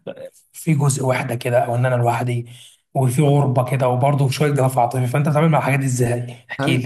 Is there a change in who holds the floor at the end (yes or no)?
yes